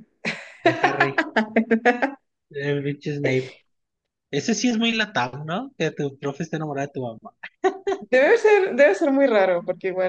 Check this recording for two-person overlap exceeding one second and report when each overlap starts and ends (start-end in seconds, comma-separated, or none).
none